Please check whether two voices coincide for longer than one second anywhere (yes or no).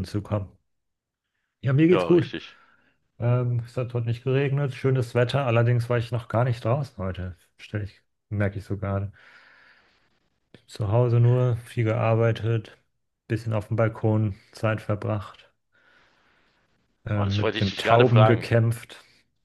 yes